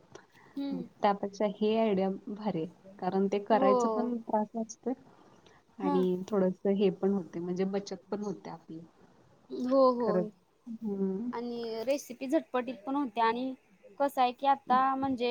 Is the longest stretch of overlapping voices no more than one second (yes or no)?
yes